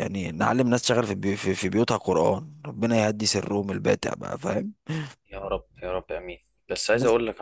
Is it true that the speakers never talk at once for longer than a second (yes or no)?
yes